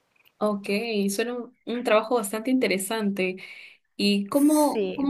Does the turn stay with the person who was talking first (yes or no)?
yes